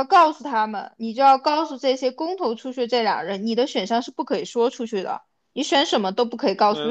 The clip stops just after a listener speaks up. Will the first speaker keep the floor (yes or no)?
yes